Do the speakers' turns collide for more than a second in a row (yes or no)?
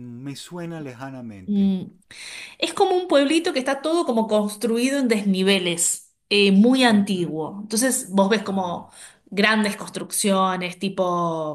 no